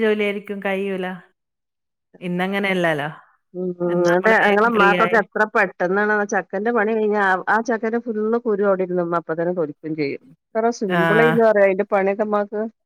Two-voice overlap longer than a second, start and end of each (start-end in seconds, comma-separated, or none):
none